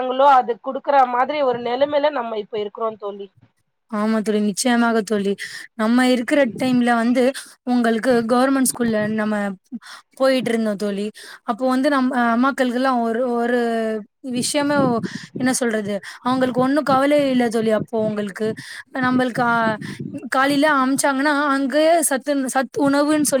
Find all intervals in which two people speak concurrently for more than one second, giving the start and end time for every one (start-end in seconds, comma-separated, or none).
none